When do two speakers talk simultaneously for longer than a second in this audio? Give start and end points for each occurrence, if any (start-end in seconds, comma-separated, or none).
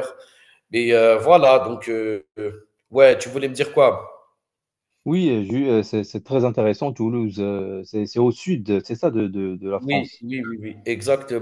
none